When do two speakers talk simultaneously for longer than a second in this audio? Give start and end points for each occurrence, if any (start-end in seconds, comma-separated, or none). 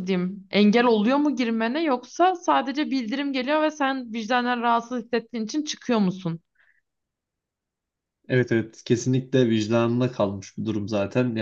none